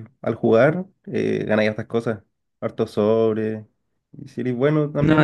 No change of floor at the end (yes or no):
yes